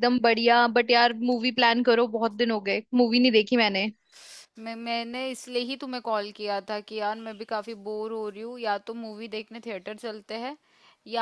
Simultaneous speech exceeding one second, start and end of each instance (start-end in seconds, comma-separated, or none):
none